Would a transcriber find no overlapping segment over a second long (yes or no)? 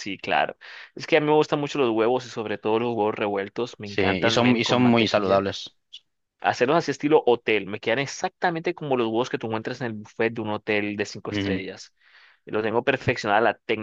no